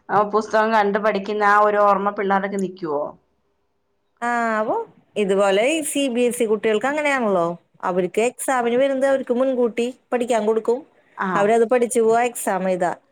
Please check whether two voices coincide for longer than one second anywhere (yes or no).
no